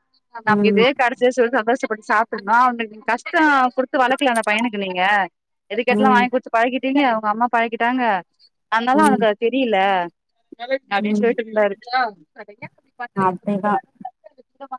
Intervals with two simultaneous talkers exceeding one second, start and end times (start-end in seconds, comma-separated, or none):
none